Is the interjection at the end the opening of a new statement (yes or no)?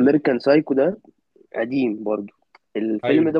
no